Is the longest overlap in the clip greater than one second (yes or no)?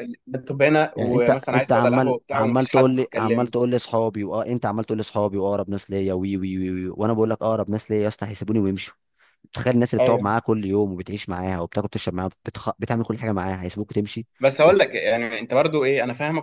yes